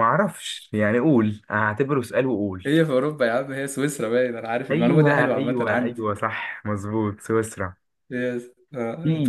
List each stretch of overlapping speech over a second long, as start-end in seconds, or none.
4.7-6.0